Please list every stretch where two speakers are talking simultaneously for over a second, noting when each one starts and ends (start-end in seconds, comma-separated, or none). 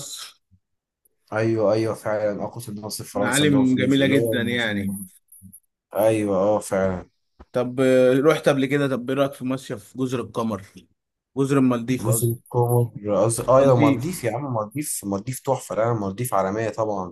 3.1-4.7